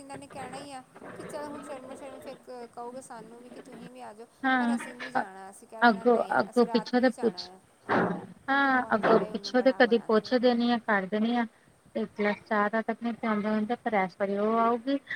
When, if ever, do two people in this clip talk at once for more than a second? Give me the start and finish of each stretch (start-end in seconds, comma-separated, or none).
5.9-7.5